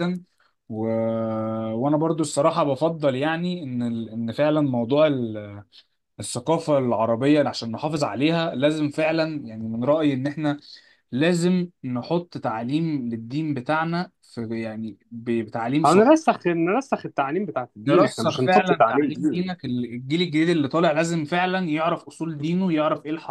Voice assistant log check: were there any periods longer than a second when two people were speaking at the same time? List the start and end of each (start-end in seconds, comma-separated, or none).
17.9-19.6